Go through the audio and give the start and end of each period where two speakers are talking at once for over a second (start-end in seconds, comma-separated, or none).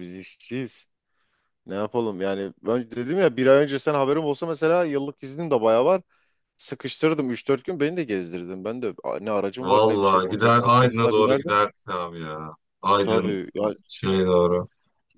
9.6-11.6